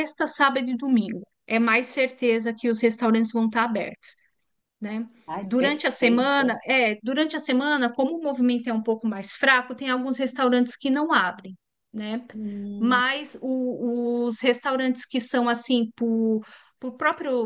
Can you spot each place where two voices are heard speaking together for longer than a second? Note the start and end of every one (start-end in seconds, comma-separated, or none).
5.3-6.6